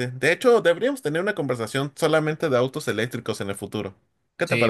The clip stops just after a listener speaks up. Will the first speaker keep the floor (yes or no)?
no